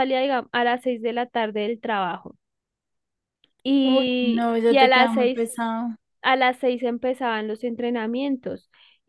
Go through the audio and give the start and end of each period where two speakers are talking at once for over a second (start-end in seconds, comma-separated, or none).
3.8-5.5